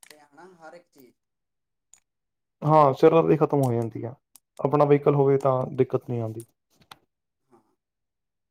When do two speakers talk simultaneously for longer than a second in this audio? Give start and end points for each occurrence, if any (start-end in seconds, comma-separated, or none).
none